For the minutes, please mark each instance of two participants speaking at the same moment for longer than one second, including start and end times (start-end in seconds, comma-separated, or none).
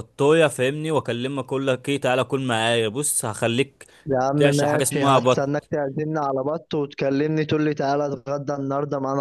4.4-5.7